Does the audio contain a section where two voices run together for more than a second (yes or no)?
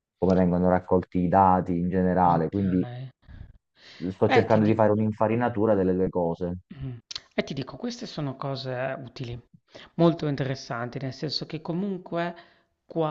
no